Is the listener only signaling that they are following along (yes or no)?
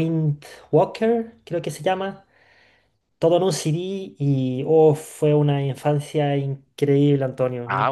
no